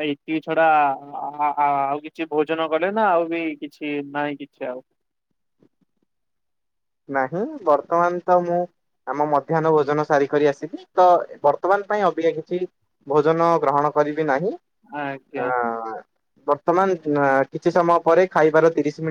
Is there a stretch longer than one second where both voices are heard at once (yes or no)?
no